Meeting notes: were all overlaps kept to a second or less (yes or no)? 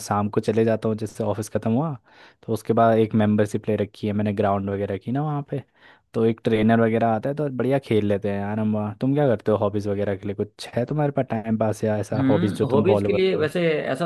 no